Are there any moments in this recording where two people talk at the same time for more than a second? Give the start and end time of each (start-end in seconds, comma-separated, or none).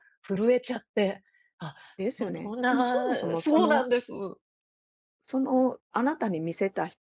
2.2-3.9